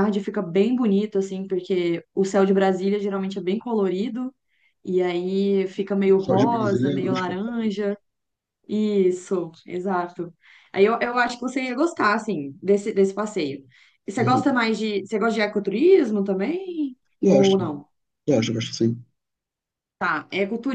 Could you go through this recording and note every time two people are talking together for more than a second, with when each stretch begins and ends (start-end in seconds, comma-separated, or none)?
6.2-7.7